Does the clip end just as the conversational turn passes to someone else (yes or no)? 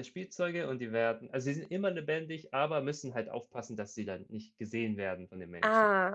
yes